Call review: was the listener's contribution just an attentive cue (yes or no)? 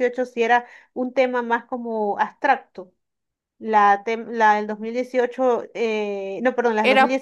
yes